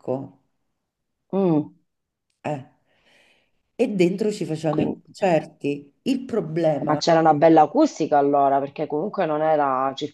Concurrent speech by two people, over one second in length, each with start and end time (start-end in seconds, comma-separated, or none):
none